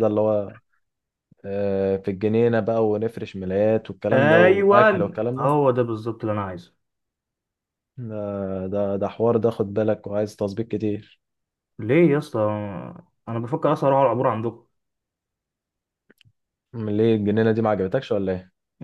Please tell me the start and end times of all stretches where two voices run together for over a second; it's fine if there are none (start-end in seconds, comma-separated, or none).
4.1-5.5